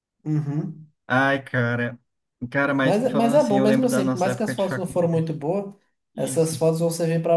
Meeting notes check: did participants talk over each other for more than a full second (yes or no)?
yes